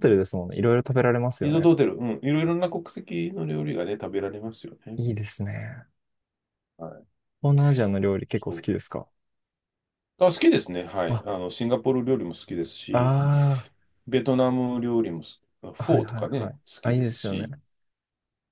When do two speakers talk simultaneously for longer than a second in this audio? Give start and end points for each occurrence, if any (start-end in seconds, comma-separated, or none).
15.8-17.5